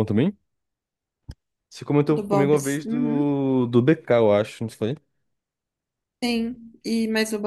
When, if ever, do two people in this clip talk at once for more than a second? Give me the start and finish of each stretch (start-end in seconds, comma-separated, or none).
2.1-3.3